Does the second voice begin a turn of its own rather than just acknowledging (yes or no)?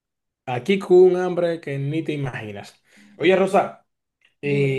no